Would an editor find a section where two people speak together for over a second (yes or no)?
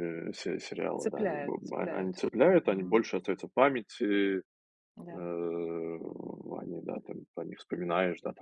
yes